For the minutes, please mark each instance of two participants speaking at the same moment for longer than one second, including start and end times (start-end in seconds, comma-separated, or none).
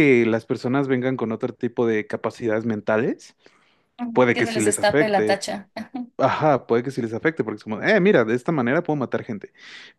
4.1-5.4